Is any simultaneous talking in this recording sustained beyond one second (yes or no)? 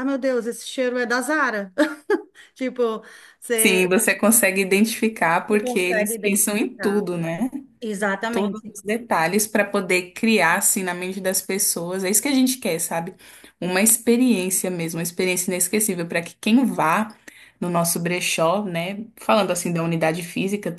yes